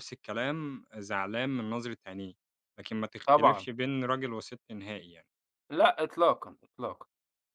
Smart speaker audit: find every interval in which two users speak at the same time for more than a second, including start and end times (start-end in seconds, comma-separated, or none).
none